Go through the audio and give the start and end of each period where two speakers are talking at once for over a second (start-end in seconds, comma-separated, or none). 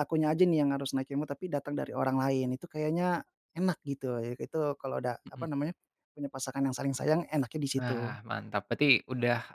none